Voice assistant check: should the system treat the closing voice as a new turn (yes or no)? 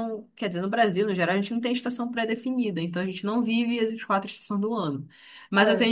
no